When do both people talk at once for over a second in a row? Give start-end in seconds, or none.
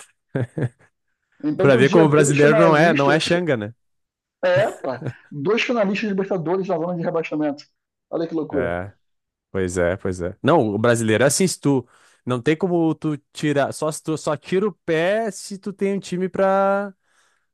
1.6-3.3